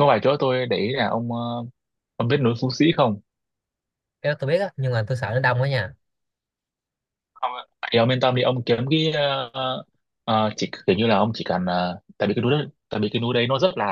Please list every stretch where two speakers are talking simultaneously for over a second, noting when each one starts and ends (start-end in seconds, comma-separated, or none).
none